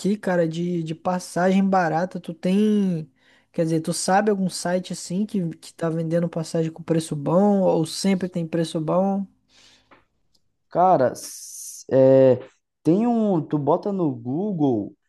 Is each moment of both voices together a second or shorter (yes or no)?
yes